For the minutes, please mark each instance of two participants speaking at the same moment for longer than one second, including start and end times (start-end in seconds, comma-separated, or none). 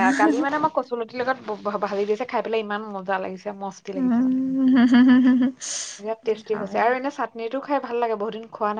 none